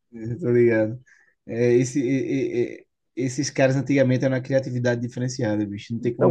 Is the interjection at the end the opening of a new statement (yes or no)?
yes